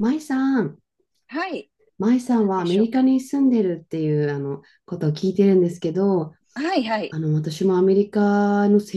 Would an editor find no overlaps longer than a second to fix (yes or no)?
yes